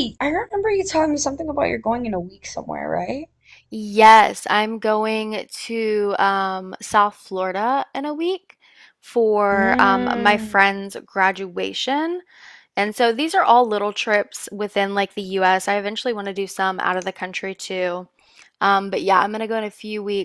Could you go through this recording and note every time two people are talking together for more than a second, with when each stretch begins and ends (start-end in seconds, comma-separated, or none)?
9.5-10.8